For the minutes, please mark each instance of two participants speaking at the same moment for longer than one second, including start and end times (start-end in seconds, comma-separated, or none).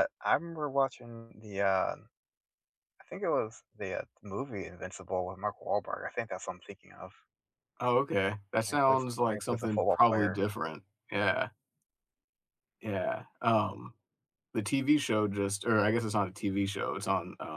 8.7-10.4